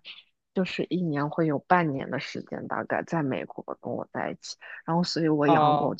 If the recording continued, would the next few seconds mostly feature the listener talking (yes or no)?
no